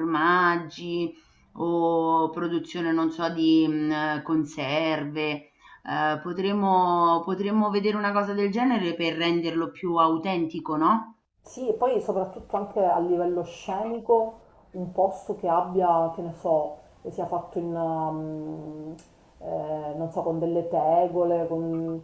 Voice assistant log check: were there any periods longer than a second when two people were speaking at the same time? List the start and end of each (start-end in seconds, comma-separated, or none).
none